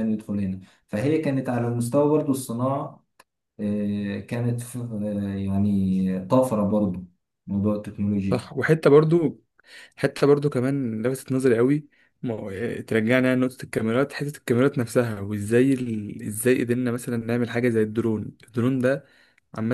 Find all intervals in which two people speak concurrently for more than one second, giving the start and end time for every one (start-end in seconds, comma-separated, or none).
none